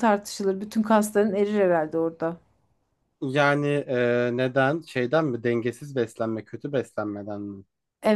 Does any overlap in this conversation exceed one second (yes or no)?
no